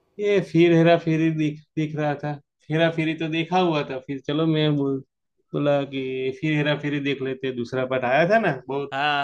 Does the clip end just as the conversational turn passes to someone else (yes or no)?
yes